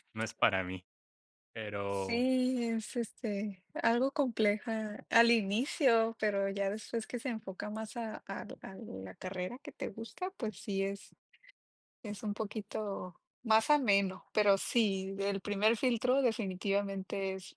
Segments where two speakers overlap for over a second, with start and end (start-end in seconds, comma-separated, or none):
none